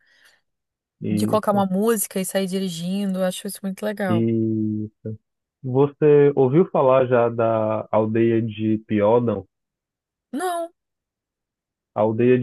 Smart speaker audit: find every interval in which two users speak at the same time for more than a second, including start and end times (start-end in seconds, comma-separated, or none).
none